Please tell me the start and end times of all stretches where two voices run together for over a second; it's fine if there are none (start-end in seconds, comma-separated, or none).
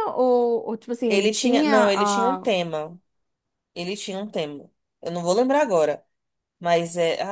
1.1-2.5